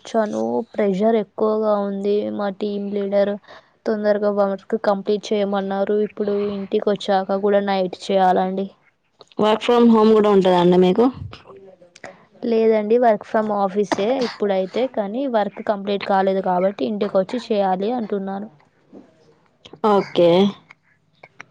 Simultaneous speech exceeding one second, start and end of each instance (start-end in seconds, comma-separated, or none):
none